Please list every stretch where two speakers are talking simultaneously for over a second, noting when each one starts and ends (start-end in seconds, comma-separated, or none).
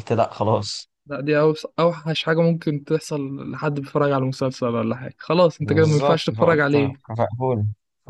5.6-7.0